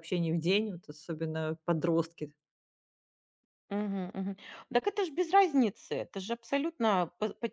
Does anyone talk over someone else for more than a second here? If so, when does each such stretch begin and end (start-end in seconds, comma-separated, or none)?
none